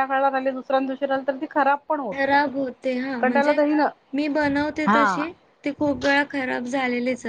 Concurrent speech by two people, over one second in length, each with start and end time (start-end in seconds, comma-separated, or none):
none